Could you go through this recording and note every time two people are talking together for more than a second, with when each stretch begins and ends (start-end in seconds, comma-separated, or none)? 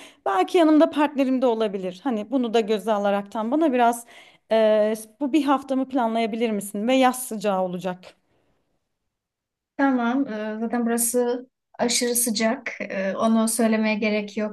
none